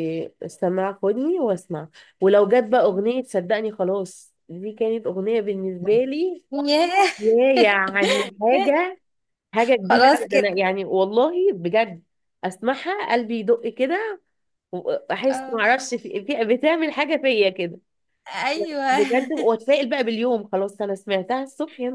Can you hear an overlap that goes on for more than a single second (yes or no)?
no